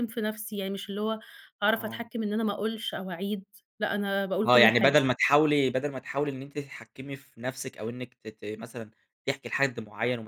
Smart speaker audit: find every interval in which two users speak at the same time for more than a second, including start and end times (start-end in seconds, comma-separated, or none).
none